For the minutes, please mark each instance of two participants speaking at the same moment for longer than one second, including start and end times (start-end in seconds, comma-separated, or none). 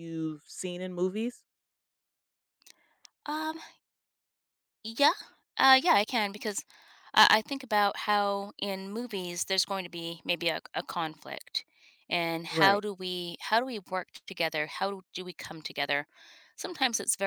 none